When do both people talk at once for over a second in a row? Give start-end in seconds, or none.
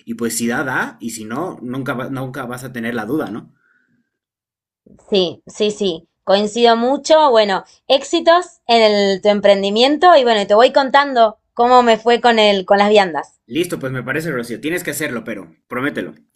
none